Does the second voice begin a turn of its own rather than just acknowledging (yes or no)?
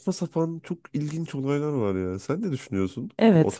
yes